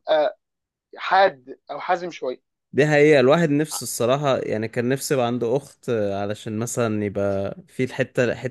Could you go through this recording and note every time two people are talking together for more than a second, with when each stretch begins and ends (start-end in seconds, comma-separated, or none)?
none